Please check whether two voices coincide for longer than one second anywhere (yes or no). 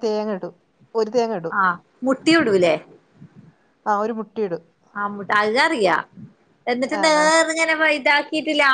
no